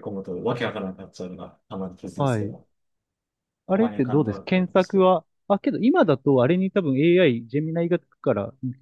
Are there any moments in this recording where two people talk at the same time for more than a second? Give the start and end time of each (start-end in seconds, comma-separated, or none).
3.7-5.1